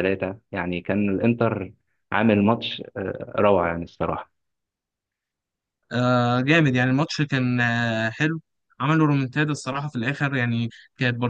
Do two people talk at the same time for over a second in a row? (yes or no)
no